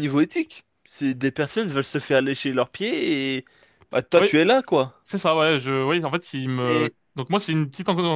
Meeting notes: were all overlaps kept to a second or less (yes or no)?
yes